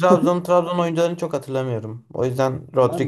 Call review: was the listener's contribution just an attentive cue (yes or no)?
no